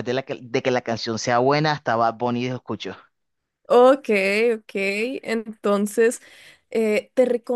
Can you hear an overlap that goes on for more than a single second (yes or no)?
no